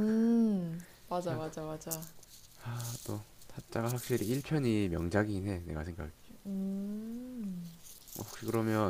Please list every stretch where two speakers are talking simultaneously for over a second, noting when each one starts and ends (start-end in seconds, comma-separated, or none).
none